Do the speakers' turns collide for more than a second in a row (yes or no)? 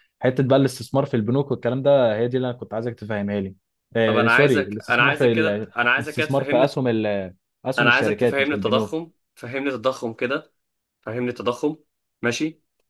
yes